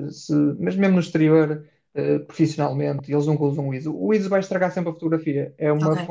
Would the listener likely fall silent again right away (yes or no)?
yes